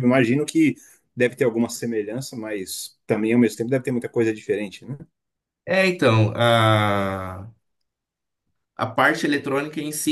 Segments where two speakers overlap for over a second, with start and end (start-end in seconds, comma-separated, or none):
none